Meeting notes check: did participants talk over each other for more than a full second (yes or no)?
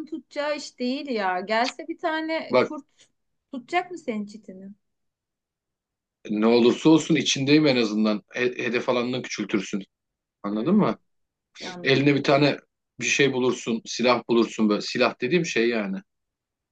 no